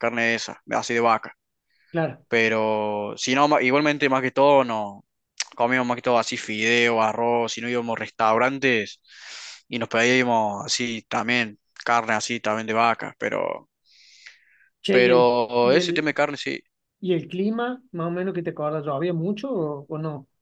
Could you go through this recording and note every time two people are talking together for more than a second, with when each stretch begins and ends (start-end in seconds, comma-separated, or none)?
14.9-16.2